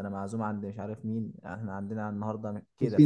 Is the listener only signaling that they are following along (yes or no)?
no